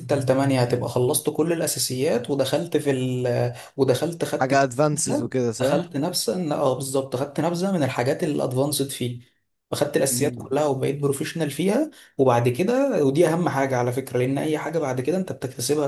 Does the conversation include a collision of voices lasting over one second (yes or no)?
yes